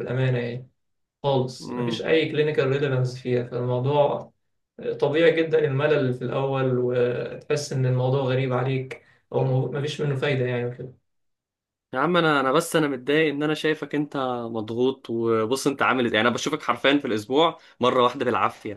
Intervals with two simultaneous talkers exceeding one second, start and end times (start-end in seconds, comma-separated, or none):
none